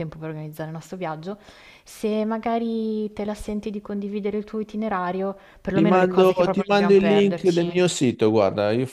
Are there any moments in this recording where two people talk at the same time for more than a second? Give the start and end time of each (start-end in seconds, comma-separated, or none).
5.7-7.8